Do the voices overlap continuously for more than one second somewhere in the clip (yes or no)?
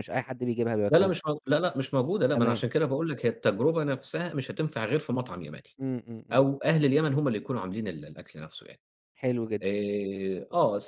no